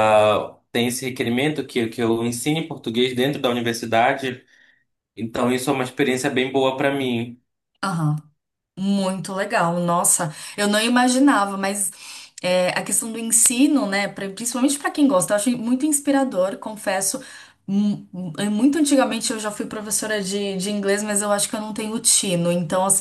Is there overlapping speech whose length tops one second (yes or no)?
no